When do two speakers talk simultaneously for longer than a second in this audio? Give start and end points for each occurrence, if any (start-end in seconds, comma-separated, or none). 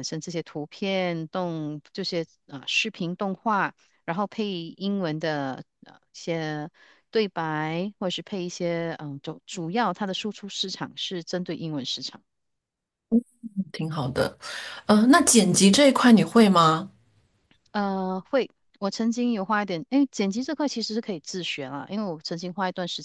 none